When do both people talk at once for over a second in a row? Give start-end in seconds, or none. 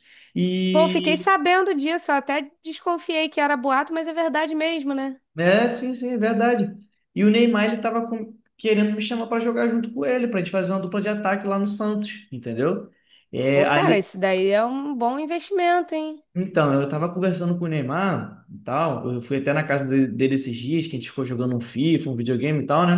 none